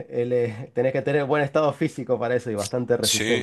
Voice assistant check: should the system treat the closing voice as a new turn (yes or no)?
yes